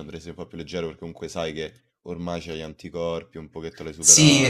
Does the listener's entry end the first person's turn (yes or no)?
yes